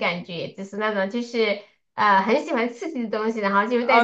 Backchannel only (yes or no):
no